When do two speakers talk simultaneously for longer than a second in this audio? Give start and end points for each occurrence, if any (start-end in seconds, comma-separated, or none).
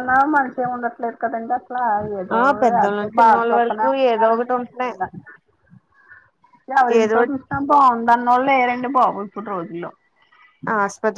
2.8-4.9